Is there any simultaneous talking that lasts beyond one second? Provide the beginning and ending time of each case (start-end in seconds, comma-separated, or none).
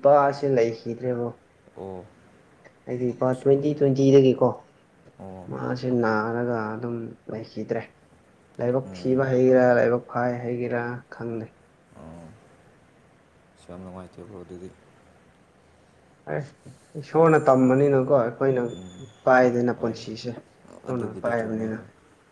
19.8-21.8